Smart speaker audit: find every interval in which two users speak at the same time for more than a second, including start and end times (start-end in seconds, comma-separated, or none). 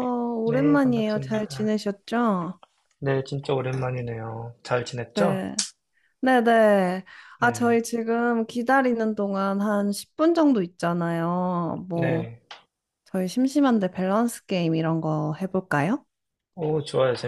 0.5-1.7